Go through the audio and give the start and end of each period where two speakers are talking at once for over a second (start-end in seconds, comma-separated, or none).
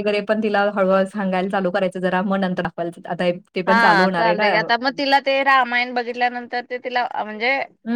none